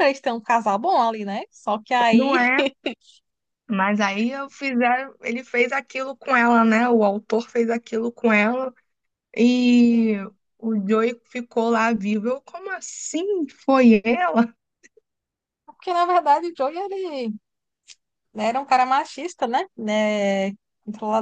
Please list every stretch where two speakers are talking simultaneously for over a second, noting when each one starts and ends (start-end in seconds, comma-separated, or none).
none